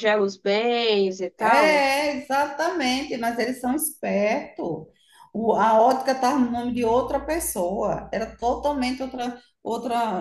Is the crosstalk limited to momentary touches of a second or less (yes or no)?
yes